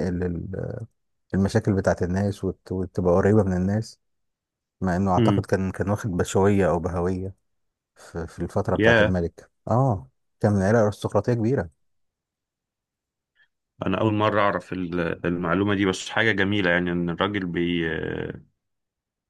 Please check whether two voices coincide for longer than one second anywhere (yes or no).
no